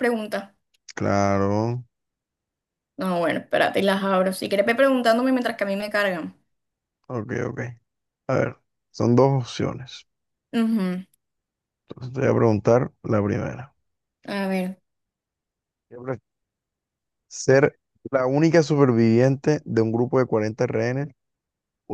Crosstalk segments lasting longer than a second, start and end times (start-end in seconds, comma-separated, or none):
none